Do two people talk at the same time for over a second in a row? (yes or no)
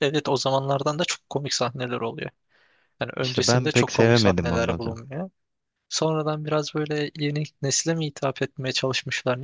yes